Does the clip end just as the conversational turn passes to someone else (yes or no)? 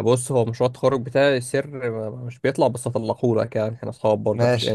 yes